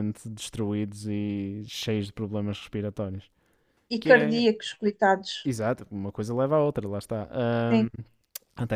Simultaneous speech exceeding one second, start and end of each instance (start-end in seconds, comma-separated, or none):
none